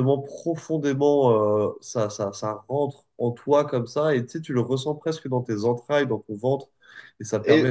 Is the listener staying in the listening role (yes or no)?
yes